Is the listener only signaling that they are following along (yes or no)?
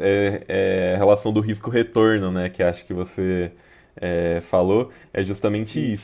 yes